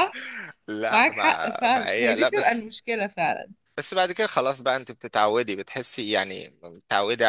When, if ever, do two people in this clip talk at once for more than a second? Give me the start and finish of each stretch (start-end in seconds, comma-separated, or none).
0.9-2.7